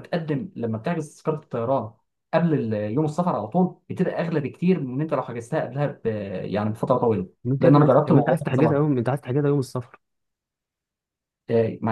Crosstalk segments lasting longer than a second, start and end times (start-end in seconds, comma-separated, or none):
7.5-9.0